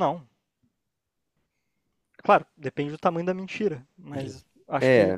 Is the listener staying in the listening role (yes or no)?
no